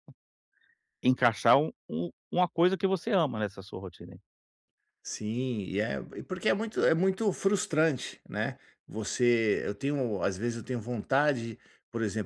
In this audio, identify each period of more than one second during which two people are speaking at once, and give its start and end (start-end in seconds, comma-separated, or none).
none